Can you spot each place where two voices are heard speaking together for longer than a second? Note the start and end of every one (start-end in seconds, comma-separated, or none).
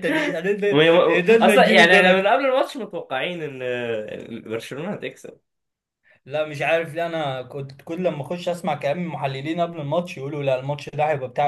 0.7-2.3